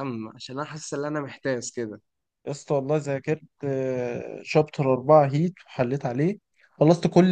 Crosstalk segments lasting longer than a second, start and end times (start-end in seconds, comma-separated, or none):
none